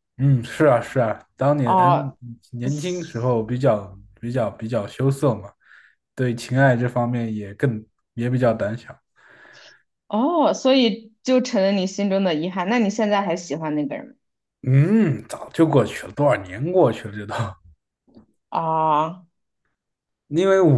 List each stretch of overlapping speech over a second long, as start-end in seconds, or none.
none